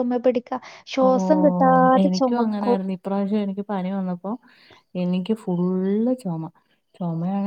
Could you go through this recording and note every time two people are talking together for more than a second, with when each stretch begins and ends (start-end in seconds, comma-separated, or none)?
1.1-2.8